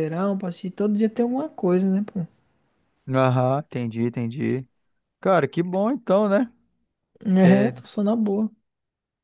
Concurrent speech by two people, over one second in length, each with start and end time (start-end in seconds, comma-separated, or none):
none